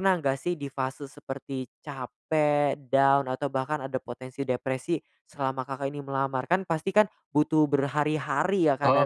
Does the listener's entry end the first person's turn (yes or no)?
no